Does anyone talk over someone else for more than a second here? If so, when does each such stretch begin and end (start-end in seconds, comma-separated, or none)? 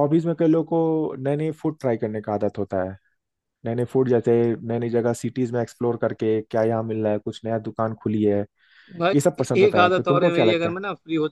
9.1-10.8